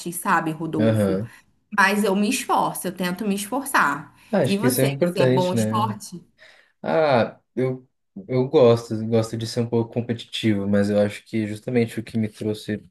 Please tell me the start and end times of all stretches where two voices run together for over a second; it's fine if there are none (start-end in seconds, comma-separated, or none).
4.3-6.0